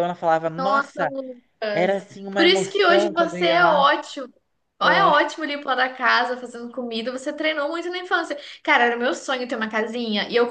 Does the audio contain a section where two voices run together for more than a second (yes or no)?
yes